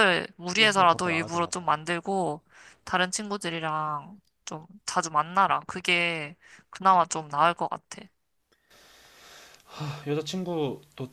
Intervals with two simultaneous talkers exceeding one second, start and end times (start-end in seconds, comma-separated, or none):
0.5-1.7